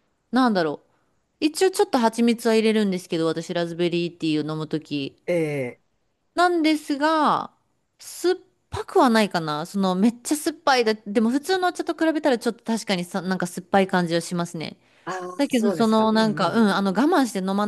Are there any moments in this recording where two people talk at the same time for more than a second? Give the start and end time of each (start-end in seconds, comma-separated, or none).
15.4-16.8